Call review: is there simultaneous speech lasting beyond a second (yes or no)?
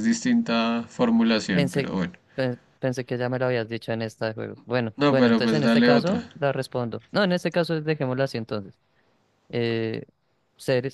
yes